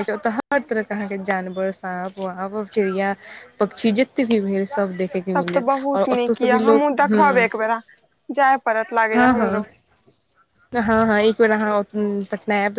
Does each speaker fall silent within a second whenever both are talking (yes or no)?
yes